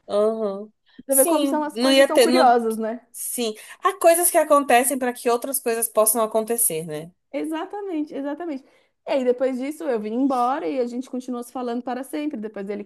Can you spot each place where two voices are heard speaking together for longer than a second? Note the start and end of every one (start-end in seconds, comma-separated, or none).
1.1-2.5